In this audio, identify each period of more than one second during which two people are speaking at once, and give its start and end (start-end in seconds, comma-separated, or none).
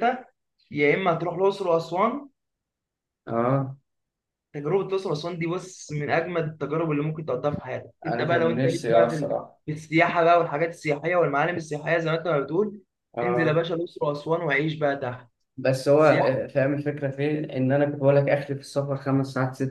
8.1-9.6